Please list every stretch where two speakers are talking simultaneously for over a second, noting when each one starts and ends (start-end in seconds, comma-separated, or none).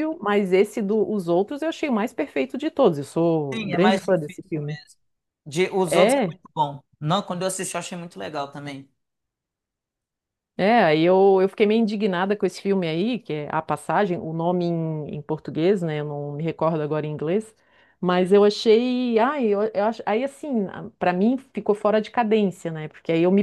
3.5-4.8